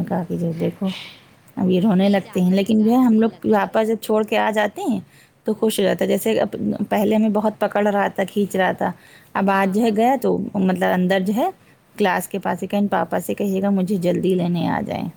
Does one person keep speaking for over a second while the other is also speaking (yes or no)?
yes